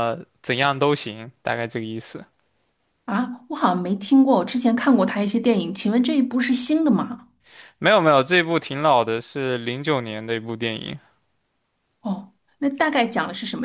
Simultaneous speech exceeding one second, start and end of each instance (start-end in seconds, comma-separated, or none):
none